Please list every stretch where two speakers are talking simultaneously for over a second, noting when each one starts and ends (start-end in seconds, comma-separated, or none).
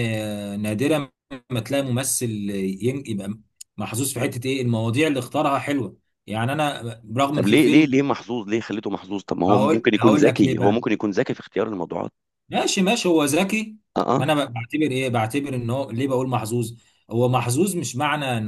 9.5-10.8